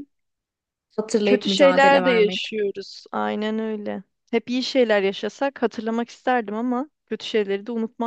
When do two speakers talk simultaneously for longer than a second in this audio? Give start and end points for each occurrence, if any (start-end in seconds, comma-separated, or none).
1.2-2.5